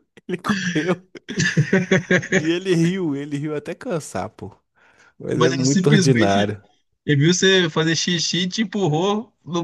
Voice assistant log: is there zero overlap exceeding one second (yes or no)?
no